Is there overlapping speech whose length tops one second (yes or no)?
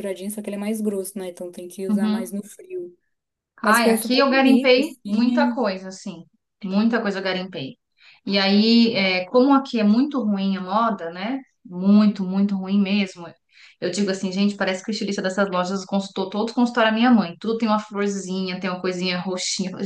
yes